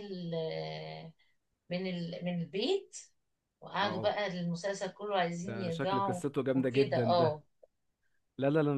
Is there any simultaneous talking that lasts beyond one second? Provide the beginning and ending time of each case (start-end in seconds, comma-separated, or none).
5.4-7.4